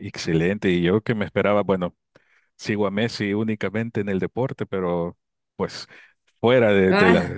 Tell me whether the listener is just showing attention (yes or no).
yes